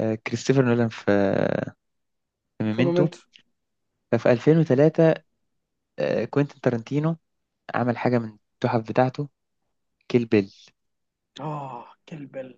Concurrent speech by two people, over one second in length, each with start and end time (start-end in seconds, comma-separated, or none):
none